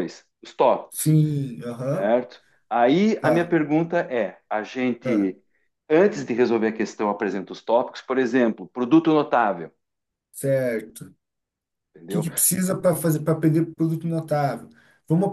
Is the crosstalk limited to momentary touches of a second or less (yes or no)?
yes